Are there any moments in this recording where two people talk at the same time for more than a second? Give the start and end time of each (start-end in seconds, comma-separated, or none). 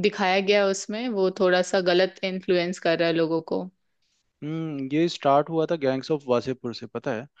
none